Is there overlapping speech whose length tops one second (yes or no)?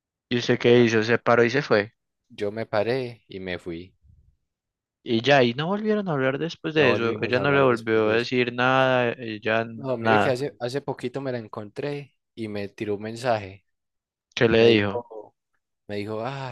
yes